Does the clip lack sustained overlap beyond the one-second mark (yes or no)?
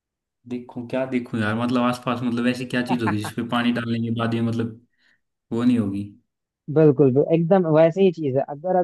yes